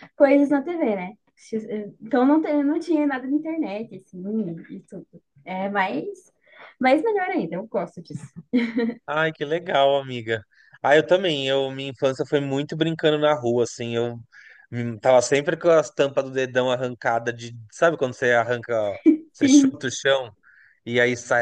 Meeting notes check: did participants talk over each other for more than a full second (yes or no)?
no